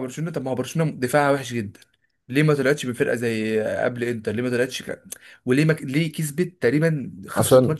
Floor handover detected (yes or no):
no